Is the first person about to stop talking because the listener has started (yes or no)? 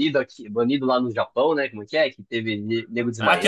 yes